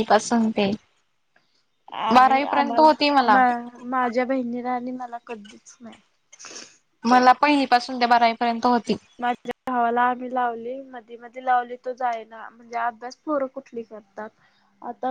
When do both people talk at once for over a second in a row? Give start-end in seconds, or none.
2.1-3.4